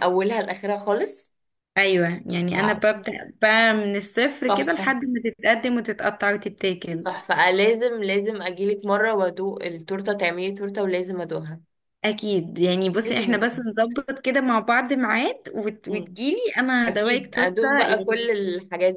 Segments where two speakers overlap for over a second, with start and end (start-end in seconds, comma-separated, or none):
16.9-18.3